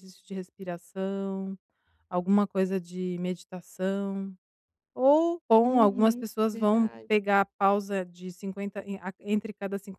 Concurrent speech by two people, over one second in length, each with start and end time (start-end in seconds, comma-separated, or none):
5.6-7.1